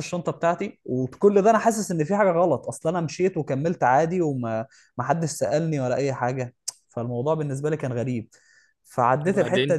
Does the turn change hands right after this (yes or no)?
no